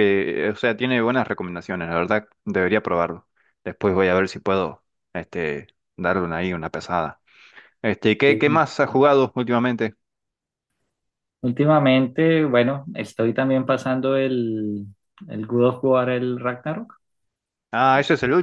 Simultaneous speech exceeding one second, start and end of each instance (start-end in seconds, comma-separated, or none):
none